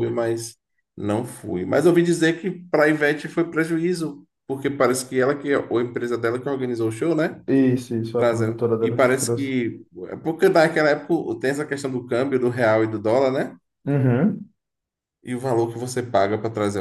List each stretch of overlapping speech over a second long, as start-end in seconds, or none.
8.2-9.5